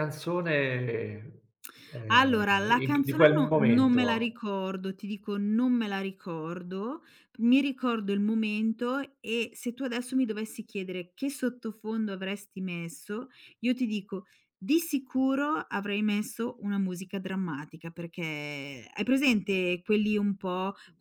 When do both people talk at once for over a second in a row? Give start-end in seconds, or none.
2.1-4.4